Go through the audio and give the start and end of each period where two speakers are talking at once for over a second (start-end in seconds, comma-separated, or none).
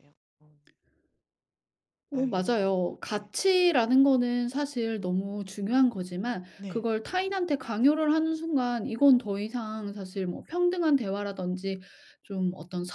2.1-3.3